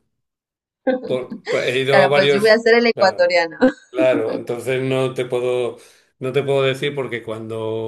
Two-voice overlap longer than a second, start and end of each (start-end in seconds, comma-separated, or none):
1.9-3.3